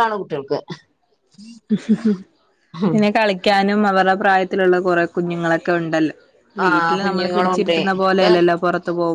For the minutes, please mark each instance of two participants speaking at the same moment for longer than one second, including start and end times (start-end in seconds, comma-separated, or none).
6.6-8.2